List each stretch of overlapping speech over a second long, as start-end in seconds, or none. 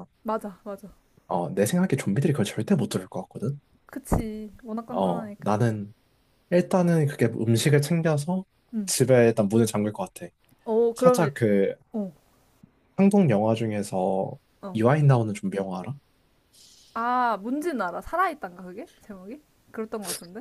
none